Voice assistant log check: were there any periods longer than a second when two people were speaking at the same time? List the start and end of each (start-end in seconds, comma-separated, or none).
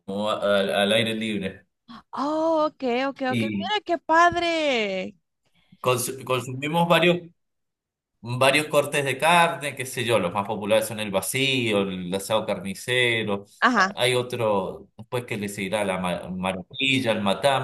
none